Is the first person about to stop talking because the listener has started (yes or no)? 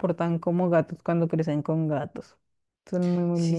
yes